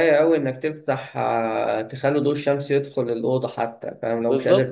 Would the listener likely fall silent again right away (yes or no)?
no